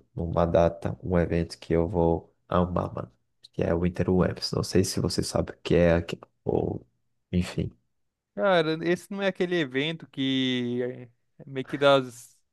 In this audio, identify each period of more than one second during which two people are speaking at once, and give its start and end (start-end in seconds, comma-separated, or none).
none